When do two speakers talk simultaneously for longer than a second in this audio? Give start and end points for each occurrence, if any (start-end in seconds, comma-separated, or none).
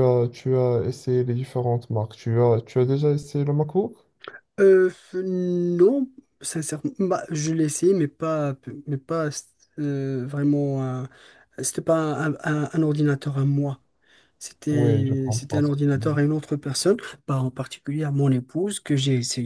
14.7-16.2